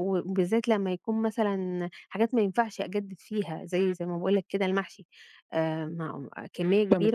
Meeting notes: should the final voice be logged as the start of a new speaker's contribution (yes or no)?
yes